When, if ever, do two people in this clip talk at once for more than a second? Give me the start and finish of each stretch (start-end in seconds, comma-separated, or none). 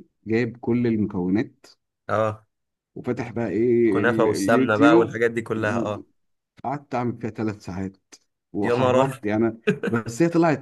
3.9-5.2